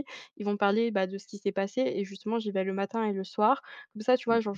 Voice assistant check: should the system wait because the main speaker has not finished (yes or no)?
yes